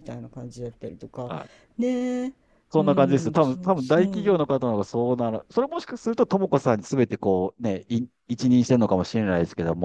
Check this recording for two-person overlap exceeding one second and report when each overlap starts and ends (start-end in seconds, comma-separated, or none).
2.8-4.3